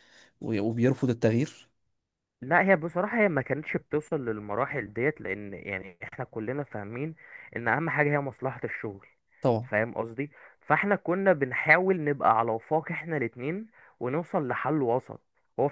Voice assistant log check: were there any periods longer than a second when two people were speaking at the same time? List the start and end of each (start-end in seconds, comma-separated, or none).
none